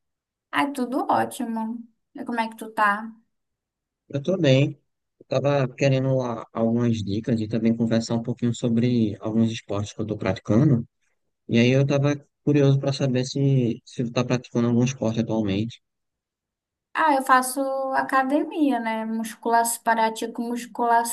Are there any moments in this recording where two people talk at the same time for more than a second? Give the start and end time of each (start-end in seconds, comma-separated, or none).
none